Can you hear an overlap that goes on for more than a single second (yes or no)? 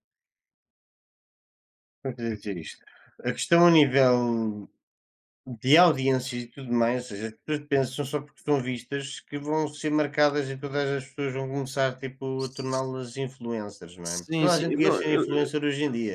yes